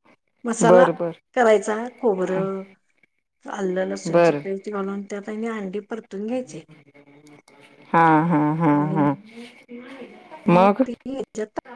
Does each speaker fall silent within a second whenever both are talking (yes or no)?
yes